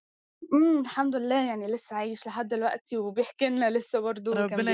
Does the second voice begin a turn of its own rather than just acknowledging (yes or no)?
yes